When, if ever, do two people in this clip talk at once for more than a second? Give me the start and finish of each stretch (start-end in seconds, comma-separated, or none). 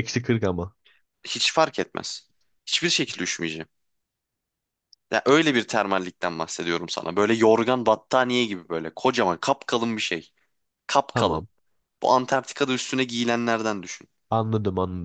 none